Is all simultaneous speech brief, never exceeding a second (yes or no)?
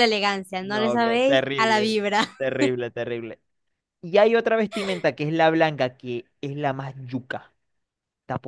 no